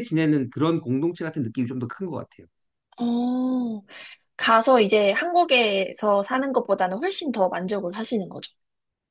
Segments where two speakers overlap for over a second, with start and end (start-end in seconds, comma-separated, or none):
none